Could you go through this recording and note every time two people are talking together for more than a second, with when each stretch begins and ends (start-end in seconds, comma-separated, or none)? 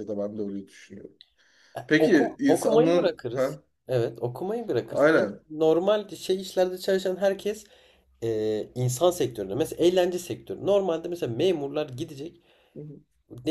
1.9-3.6